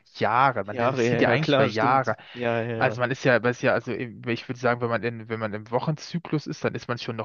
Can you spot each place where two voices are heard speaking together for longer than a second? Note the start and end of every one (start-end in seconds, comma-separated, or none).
0.6-2.1